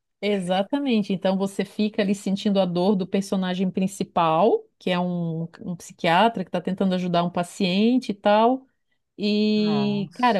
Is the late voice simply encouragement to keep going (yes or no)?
yes